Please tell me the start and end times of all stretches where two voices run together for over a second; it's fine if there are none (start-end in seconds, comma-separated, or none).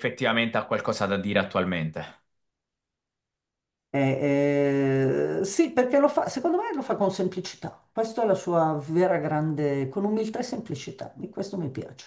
none